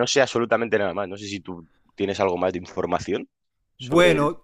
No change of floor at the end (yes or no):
no